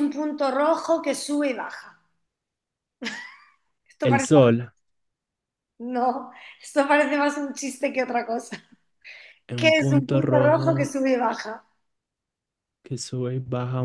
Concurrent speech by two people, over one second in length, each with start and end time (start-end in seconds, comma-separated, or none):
9.6-10.9